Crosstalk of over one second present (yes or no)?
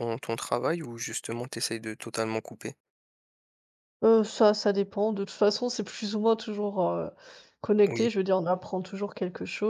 no